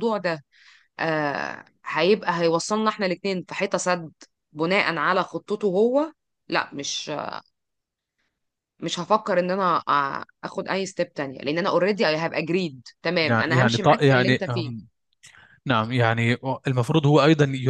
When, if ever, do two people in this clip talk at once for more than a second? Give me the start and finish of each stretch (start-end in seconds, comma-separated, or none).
13.2-14.8